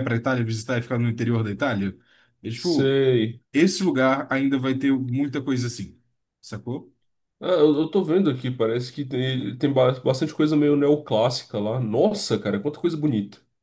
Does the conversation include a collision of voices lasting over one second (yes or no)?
no